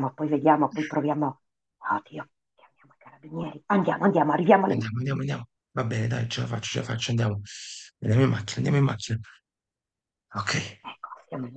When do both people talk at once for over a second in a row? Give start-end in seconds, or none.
none